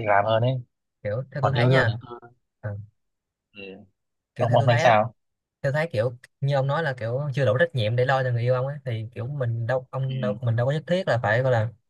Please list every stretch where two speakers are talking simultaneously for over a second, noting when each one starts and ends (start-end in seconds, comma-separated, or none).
none